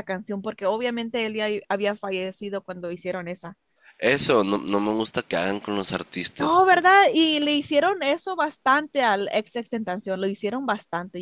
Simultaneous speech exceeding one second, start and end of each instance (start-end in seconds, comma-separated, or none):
none